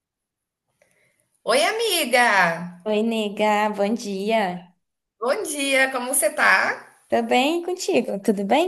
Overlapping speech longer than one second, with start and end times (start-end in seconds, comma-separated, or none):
none